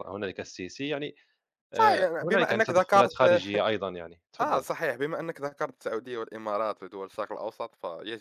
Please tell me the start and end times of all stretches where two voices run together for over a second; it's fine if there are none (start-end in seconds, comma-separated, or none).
1.8-3.2